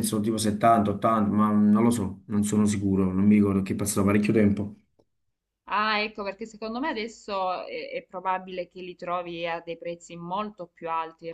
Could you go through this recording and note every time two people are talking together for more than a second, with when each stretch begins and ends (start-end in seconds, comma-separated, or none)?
none